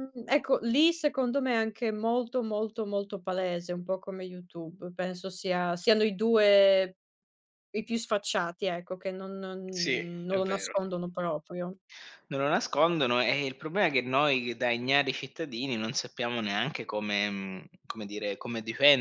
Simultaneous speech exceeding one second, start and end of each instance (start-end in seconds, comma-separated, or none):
none